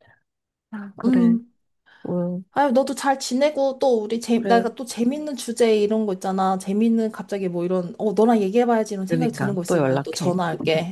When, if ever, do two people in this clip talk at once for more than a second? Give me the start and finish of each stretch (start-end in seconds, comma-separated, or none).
9.1-10.4